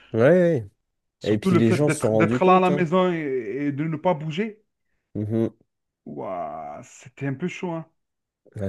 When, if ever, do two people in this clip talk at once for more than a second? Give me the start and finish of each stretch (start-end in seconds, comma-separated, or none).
1.3-2.9